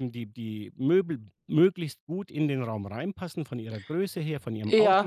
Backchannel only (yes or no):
no